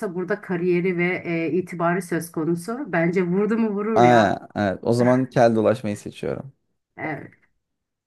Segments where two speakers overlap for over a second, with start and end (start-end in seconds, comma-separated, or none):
none